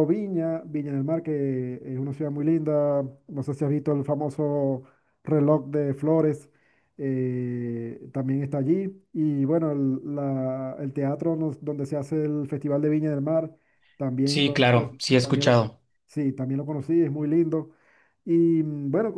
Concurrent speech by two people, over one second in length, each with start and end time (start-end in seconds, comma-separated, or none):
14.3-15.6